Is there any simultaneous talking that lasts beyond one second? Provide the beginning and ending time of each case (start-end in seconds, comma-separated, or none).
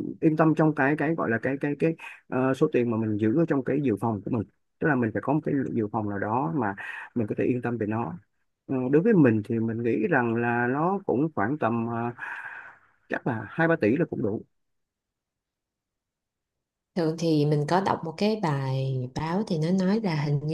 none